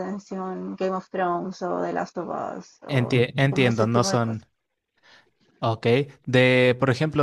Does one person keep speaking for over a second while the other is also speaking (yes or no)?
yes